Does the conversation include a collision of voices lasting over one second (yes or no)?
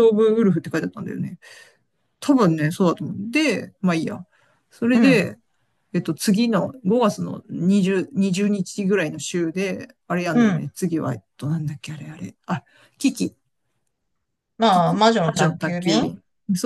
yes